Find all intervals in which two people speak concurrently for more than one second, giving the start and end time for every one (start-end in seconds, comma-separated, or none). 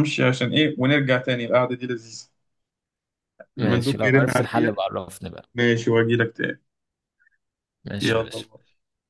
3.6-4.8